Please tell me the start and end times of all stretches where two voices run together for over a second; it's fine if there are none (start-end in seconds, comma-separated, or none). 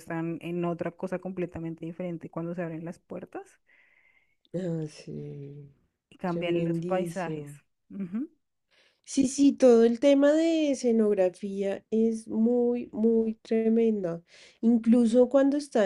6.2-7.5